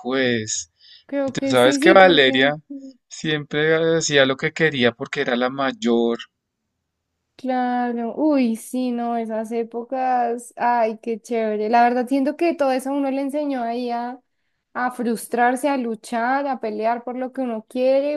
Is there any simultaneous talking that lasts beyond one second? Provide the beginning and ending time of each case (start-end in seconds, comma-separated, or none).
1.3-2.5